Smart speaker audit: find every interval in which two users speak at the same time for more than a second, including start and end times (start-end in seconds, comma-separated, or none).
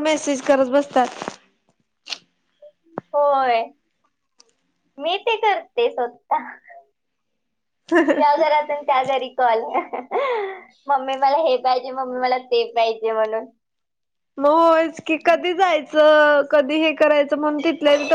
none